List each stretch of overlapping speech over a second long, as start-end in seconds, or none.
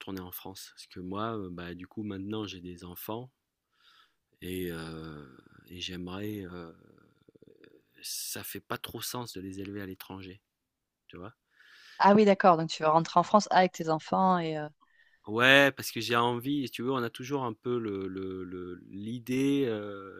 none